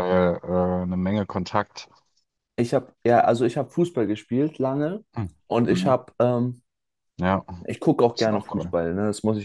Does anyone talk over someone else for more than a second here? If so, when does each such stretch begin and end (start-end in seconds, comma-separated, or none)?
none